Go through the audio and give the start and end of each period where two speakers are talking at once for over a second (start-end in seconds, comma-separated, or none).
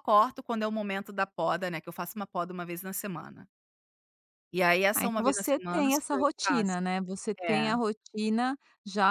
5.0-6.8